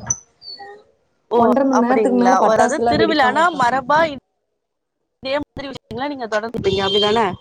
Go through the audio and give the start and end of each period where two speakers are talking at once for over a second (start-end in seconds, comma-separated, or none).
1.8-3.6